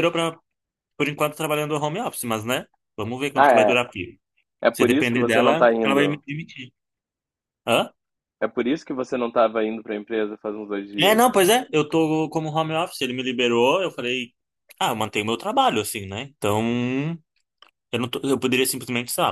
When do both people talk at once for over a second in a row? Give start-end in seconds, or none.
4.7-6.2